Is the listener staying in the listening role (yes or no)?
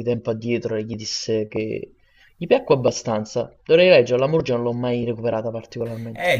no